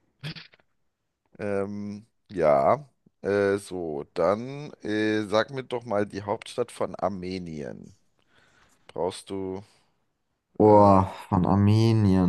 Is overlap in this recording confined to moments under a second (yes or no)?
yes